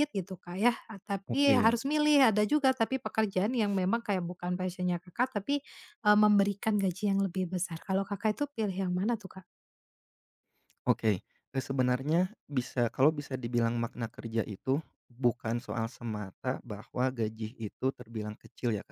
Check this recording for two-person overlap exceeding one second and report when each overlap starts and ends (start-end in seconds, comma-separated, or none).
none